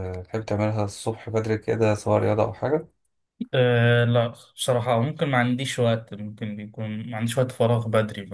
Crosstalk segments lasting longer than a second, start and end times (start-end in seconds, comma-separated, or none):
none